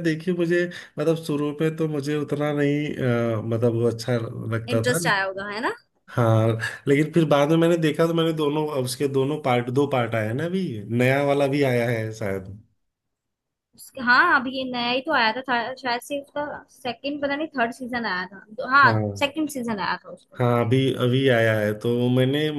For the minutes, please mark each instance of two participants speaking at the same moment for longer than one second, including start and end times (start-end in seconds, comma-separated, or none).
none